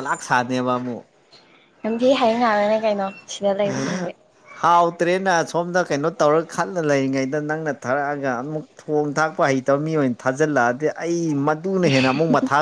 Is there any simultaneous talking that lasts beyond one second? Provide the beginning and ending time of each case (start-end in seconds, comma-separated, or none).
none